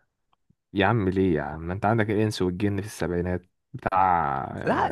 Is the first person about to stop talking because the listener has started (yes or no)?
yes